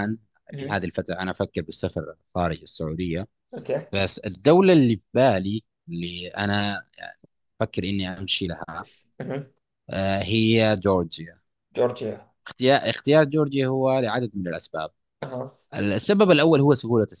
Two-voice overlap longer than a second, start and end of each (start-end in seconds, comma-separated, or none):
none